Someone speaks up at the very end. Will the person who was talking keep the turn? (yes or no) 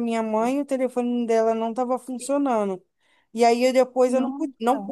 yes